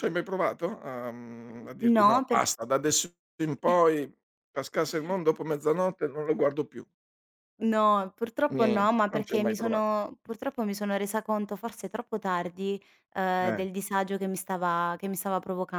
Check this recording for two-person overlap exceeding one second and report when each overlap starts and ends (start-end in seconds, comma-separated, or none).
8.5-9.8